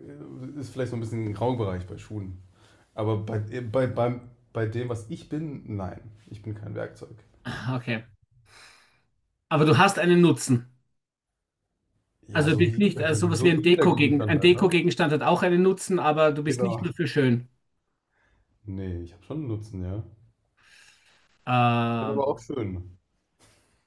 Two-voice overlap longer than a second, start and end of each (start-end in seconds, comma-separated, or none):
12.3-14.8